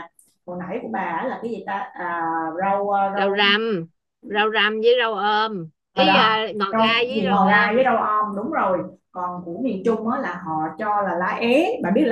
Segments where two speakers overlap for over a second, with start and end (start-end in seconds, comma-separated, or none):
5.9-7.9